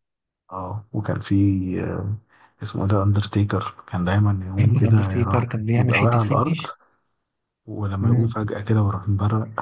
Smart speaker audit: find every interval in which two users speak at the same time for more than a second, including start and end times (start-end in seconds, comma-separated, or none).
4.6-6.6